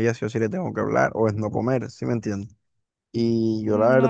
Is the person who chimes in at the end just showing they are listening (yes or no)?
yes